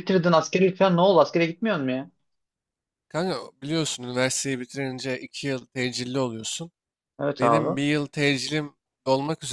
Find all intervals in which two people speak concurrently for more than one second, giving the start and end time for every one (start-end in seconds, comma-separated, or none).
none